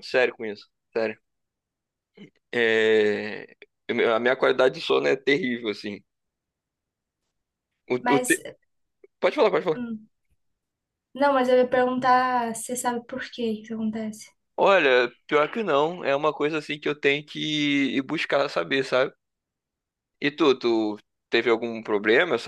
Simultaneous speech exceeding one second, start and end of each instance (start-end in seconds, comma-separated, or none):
none